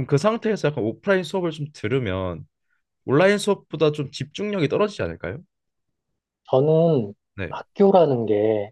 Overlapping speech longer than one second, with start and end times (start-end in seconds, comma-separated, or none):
none